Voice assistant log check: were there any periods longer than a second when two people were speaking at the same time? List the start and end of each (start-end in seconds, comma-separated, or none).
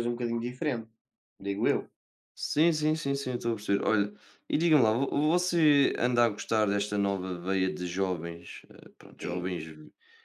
none